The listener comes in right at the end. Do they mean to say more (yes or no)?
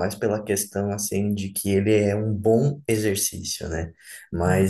no